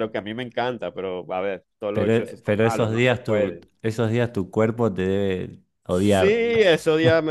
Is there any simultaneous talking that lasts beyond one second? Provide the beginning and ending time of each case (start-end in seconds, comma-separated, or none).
1.9-3.6